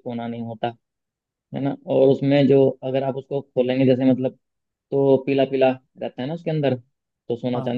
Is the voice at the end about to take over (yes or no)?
no